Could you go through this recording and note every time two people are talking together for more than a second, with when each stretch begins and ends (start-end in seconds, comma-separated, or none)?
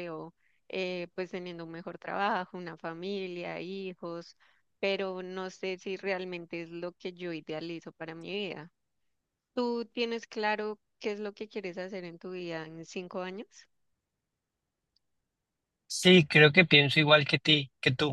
none